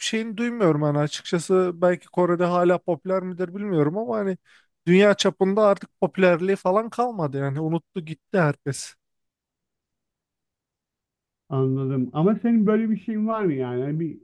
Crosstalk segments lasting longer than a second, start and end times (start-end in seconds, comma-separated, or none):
none